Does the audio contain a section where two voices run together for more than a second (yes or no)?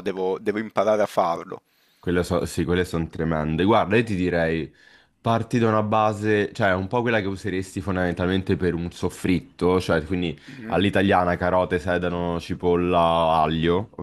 no